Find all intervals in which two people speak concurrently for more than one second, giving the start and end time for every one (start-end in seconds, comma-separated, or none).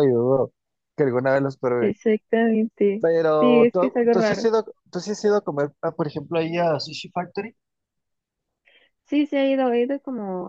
3.0-4.5